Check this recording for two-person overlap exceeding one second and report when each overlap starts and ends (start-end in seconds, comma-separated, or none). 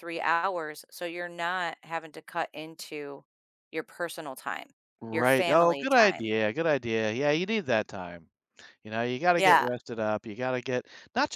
5.1-6.3